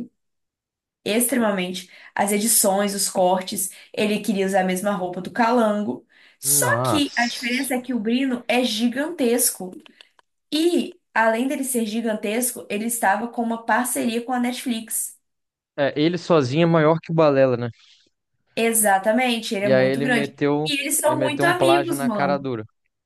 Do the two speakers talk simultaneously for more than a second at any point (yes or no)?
yes